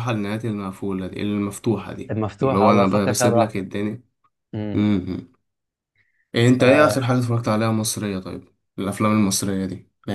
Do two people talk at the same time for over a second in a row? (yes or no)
yes